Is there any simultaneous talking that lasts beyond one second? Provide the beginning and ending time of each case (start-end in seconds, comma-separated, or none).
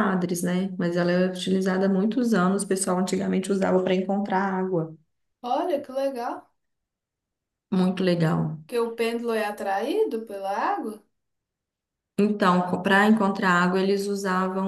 none